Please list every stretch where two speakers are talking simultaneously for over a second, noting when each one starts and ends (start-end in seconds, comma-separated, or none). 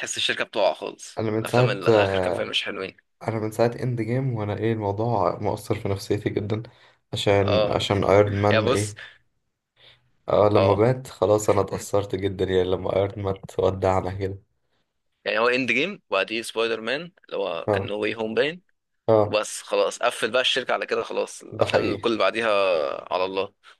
1.2-2.5